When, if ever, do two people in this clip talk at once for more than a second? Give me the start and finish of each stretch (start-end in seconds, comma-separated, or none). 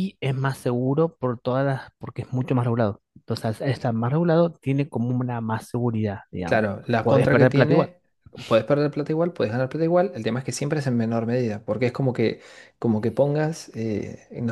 6.4-7.9